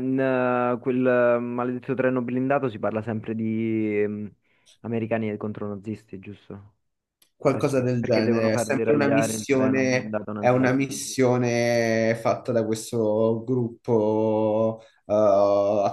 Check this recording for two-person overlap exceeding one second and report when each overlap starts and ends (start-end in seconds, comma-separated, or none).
7.5-10.8